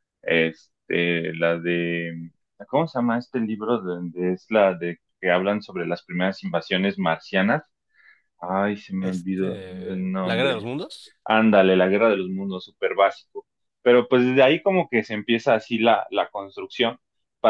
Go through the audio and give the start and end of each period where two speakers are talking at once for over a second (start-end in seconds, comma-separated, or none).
9.0-10.7